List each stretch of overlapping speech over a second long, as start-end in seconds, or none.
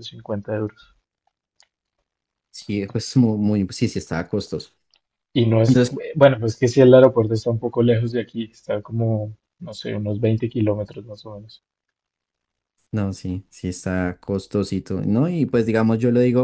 none